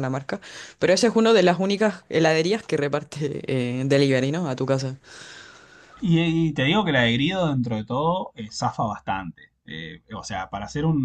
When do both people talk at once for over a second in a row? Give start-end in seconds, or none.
none